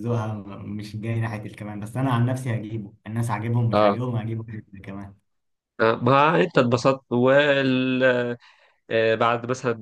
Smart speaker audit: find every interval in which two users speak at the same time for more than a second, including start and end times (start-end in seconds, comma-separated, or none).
none